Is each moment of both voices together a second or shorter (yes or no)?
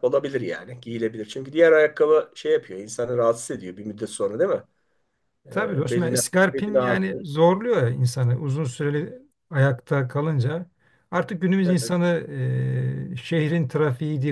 no